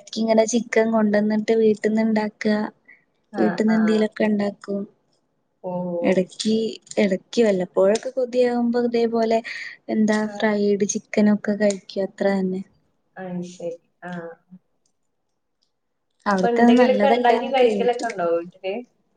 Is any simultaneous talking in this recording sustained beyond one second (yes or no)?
yes